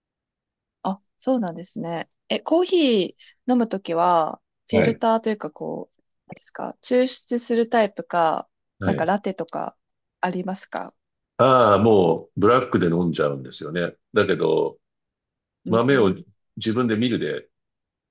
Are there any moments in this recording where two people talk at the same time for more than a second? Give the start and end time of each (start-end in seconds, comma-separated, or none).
none